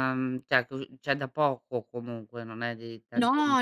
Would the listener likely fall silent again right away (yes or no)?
no